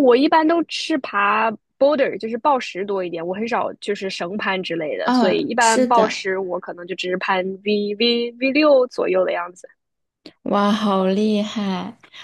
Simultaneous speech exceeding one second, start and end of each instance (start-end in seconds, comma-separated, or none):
5.0-6.3